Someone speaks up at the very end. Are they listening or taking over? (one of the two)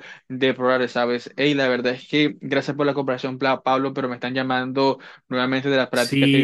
taking over